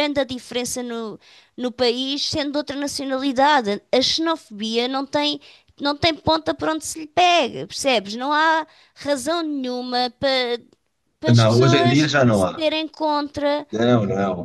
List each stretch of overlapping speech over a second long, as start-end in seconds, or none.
11.3-12.7